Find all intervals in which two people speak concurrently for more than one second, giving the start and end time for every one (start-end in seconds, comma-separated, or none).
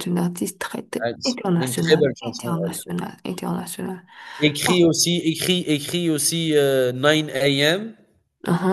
1.0-2.8